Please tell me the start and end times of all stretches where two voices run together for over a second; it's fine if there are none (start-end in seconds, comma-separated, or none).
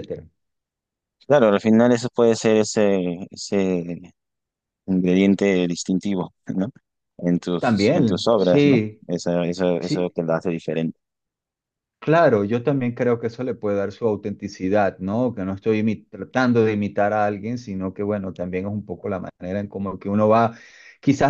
7.6-9.0